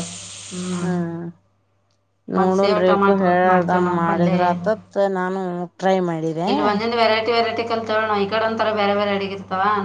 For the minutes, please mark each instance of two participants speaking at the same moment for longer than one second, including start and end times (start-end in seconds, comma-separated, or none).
2.4-4.3